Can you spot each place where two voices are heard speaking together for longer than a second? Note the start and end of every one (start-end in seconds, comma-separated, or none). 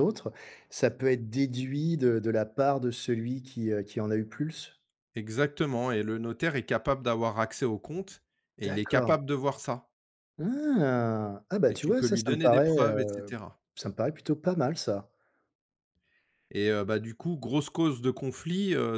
11.7-13.4